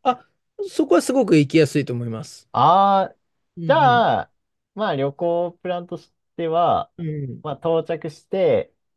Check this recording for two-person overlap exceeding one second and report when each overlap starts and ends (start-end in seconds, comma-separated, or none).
none